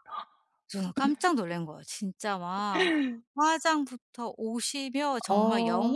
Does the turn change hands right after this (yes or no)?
no